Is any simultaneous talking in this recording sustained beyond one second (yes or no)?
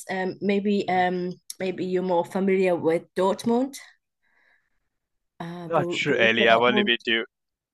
yes